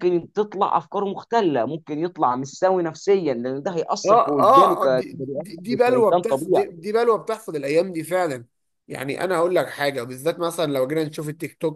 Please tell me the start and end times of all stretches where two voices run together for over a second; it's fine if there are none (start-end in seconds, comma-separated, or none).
4.0-6.7